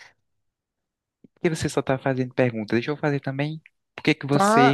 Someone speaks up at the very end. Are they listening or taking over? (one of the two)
taking over